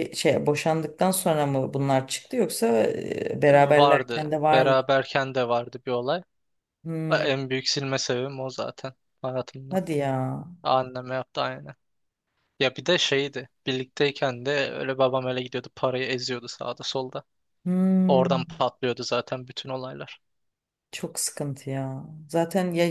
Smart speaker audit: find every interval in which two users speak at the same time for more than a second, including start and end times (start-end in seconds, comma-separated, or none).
3.4-4.8